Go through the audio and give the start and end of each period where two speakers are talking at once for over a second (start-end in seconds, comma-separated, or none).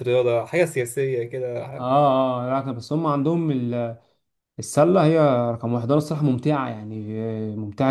none